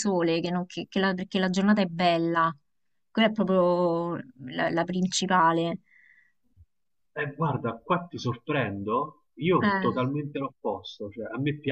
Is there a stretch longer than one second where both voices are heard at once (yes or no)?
no